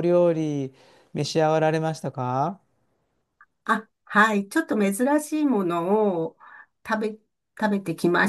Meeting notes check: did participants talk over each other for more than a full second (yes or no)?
no